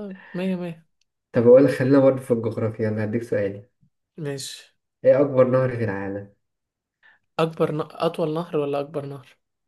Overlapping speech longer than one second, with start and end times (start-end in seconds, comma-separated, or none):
none